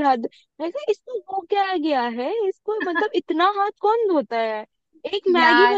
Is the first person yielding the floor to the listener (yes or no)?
no